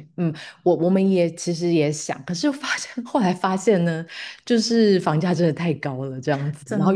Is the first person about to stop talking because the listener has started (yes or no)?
no